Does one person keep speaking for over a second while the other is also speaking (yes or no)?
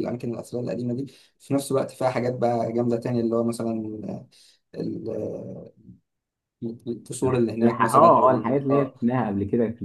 yes